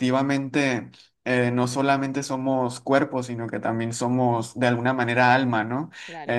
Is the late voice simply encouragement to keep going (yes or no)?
no